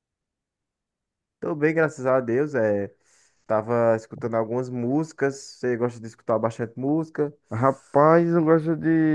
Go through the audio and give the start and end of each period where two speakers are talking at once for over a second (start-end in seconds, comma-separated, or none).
none